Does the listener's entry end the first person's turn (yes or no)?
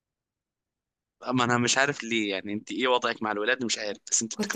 yes